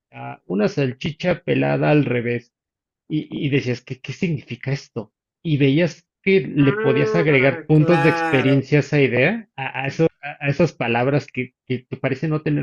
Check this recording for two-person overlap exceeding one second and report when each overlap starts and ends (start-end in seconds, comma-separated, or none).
6.6-8.7